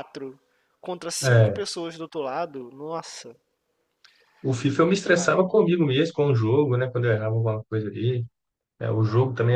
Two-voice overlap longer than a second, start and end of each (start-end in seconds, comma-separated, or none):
none